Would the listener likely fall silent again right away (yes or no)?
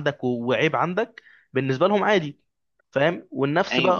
yes